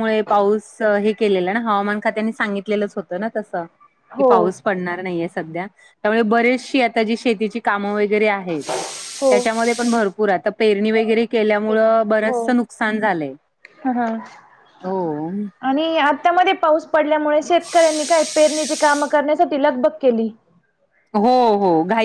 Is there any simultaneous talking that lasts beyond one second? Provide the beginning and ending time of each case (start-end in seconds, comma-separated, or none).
none